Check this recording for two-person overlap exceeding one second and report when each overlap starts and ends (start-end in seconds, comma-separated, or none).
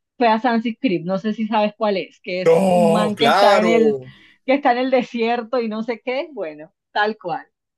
2.5-4.0